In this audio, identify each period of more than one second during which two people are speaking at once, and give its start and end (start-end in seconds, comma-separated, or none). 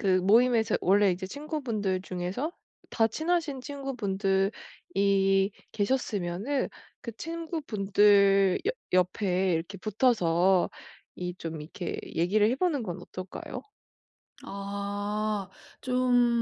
none